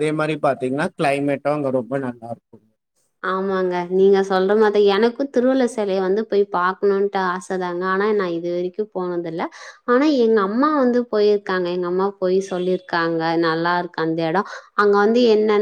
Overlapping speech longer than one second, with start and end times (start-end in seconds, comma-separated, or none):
none